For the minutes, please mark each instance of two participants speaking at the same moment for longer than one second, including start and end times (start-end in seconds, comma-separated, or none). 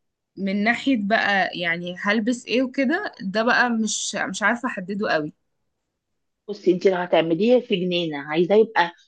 none